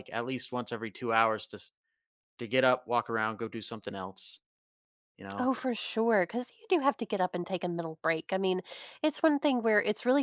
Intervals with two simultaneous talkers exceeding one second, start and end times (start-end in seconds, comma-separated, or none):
none